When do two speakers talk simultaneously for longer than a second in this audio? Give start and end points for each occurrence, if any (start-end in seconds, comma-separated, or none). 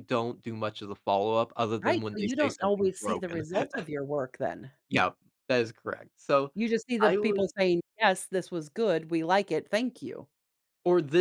1.8-3.4